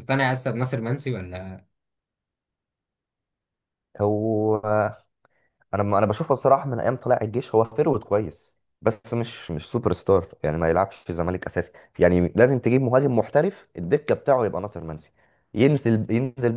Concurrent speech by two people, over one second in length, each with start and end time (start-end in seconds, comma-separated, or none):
none